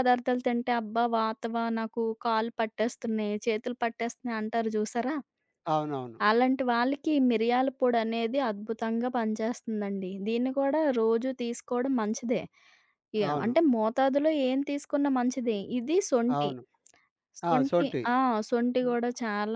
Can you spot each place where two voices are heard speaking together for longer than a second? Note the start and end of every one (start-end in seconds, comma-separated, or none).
none